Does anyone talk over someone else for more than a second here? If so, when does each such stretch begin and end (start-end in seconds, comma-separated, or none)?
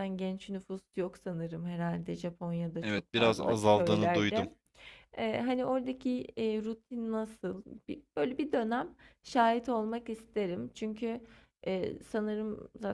2.8-4.5